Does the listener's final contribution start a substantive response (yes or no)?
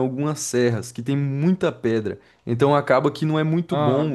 no